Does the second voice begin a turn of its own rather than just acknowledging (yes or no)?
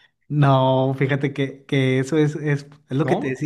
no